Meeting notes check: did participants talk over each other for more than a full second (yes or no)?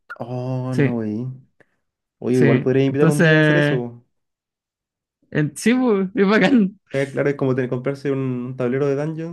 yes